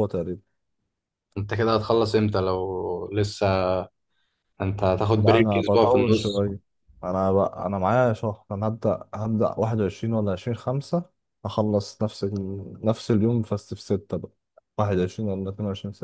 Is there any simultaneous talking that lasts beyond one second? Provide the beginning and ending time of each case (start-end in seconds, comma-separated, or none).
5.2-6.4